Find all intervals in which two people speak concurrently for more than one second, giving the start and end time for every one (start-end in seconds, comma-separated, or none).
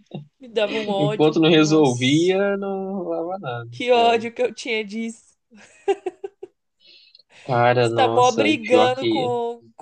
1.0-2.3, 7.8-9.3